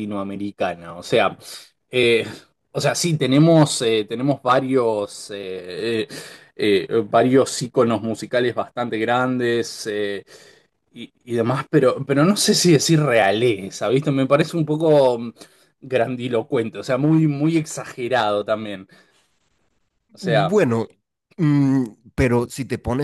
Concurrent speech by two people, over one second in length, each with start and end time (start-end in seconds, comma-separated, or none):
none